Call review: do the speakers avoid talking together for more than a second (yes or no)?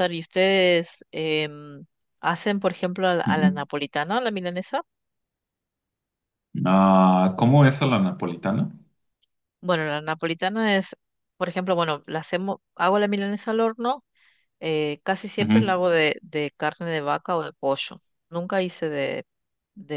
yes